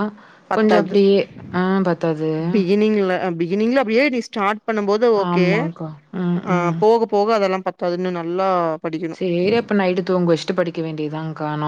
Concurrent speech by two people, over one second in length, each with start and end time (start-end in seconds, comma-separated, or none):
none